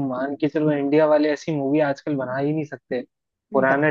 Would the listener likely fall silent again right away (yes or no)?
yes